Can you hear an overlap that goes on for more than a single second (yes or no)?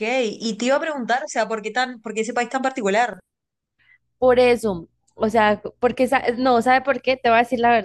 no